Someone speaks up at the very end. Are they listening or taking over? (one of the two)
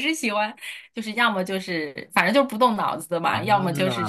listening